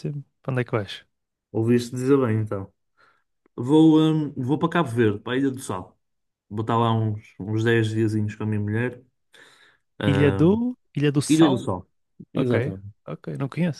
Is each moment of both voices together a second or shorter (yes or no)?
yes